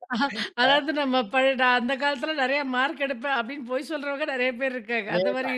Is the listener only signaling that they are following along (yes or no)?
no